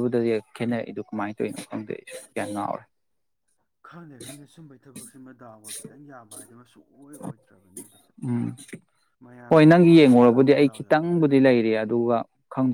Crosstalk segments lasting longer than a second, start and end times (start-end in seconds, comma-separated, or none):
9.5-11.5